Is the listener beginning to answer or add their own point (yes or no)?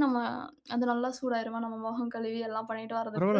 yes